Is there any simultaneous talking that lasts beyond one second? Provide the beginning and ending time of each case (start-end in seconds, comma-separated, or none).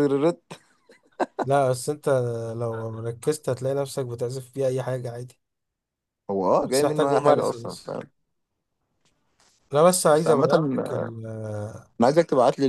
6.6-8.0